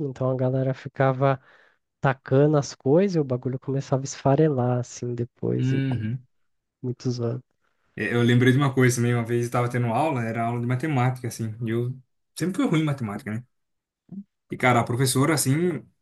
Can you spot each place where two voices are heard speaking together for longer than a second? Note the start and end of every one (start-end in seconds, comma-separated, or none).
none